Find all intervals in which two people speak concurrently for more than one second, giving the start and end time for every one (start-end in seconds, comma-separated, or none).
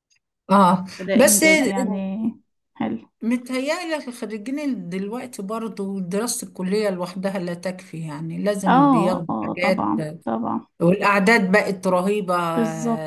8.7-9.9